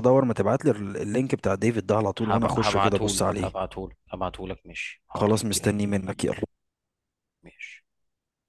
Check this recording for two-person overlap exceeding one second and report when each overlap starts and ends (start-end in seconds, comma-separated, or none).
2.2-3.5